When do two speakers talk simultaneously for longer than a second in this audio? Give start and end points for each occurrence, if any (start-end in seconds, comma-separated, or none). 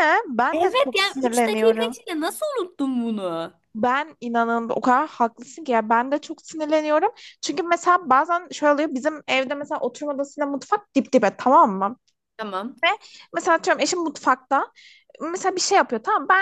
0.5-2.0